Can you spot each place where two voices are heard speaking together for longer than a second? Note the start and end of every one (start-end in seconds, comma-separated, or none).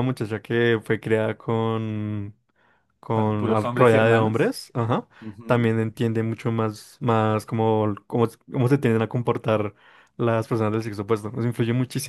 3.1-4.6